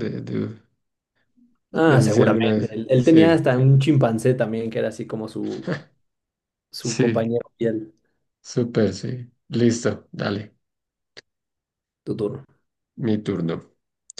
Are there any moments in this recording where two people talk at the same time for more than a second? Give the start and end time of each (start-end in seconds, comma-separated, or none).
1.7-3.2